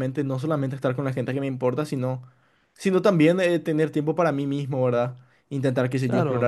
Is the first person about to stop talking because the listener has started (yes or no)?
no